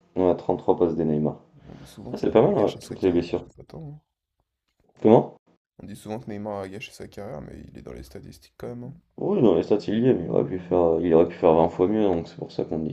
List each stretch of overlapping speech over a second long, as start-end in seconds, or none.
2.1-3.5